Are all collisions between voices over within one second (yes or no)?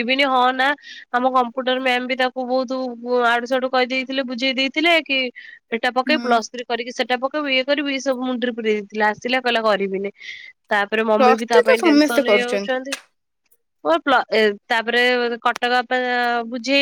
no